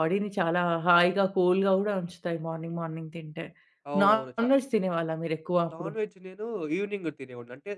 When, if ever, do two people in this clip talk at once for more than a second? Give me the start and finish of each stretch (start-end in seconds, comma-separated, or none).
none